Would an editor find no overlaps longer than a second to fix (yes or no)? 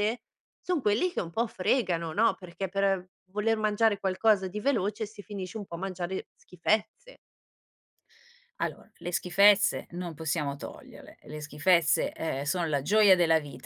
yes